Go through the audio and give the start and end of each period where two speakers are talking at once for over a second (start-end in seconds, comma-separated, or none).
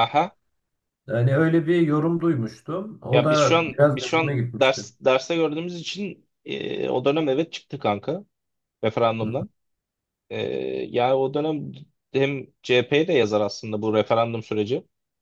3.1-4.8